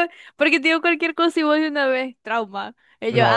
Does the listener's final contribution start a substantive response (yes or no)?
yes